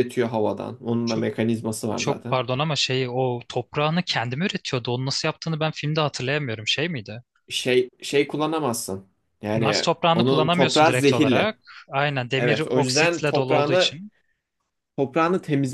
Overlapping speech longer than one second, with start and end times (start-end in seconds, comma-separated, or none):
9.5-11.6, 12.4-14.0